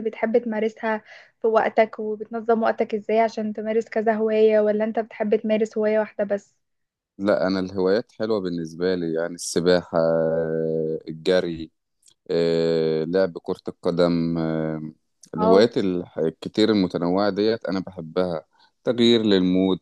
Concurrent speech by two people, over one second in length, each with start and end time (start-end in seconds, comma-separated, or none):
none